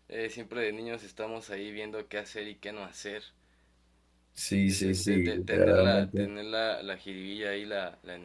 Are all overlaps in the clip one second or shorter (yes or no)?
no